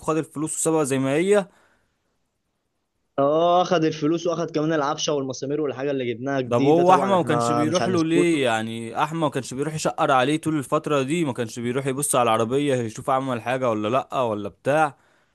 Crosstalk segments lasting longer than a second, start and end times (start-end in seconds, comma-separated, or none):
6.4-8.1